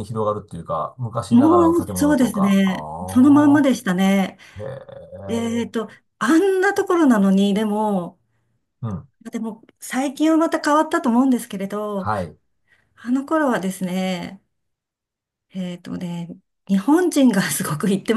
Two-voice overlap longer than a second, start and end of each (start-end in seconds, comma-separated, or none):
1.3-2.7